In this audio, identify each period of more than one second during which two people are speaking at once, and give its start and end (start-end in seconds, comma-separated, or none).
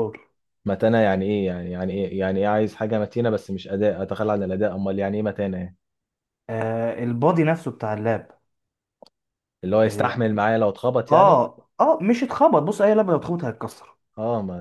none